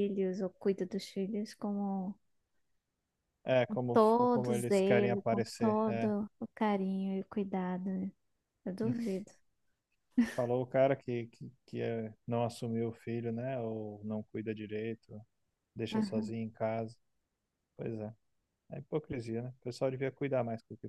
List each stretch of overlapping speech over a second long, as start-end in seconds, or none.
3.9-6.1